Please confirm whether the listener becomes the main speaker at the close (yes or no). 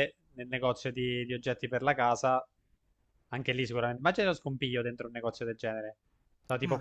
no